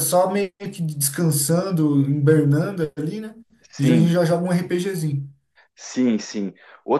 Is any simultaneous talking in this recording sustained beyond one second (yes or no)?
no